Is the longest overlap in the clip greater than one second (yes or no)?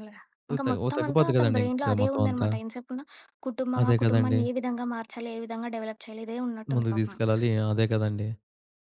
yes